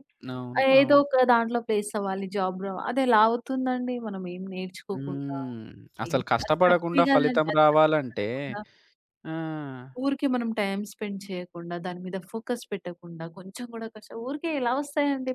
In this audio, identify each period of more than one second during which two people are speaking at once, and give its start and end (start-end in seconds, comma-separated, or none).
6.1-8.3